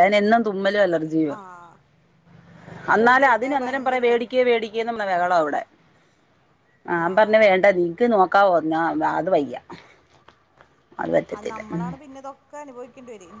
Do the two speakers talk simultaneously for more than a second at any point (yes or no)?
yes